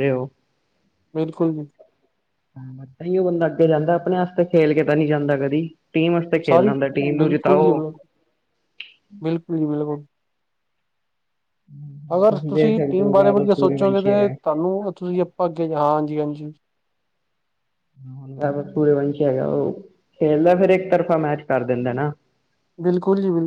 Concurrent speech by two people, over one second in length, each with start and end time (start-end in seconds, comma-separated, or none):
12.5-14.3